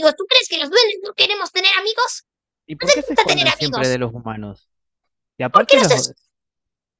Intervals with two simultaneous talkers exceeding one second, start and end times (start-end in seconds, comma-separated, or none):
2.8-4.0